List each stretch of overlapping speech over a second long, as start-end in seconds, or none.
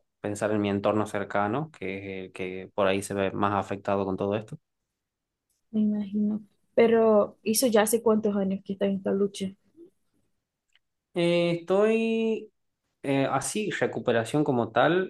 none